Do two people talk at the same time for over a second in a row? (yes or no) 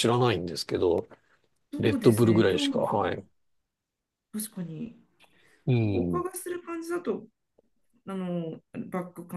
yes